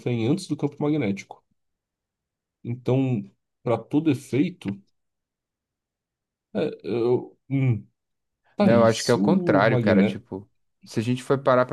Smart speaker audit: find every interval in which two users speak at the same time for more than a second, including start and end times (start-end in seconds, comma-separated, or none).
8.6-10.2